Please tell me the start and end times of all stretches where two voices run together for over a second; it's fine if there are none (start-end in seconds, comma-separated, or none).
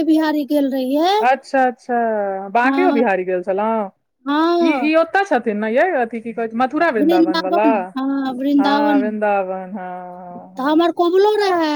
none